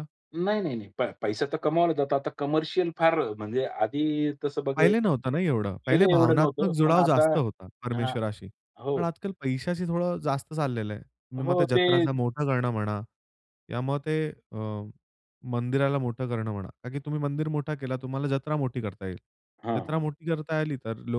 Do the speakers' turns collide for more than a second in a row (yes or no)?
yes